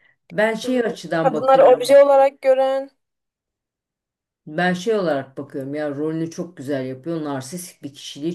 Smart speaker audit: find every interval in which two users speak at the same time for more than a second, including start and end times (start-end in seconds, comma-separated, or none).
0.6-2.0